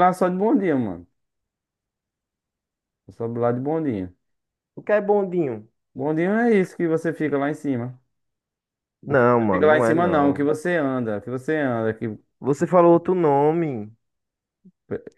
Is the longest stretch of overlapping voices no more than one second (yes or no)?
no